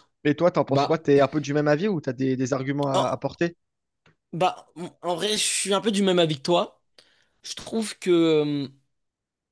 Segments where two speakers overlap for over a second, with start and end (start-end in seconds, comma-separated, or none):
none